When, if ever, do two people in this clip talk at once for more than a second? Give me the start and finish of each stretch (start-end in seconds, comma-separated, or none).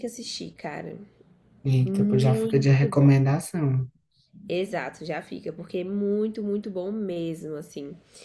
1.9-3.1